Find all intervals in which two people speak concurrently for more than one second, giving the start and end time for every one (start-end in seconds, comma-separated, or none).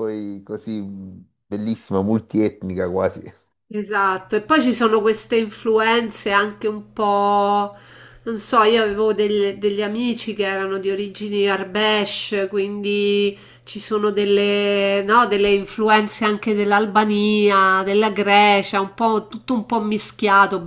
none